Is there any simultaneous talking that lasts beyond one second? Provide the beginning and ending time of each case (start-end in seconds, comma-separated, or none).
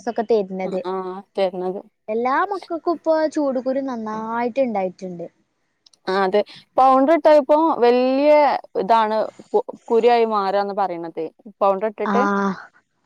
none